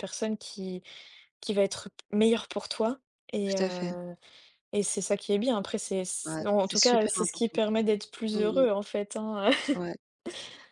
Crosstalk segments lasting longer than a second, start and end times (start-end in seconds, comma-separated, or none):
6.2-7.6